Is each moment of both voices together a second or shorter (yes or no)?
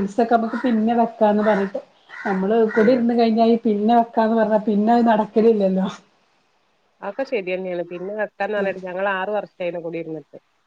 yes